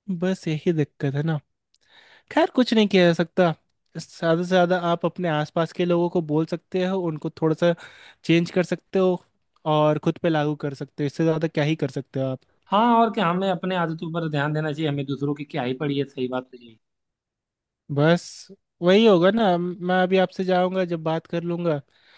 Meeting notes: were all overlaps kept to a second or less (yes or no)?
yes